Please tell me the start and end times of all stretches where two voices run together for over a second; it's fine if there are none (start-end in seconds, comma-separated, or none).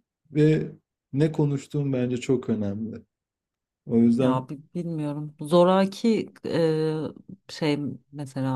none